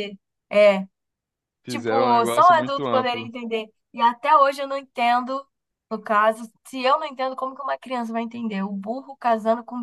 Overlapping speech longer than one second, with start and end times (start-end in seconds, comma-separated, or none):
1.7-3.3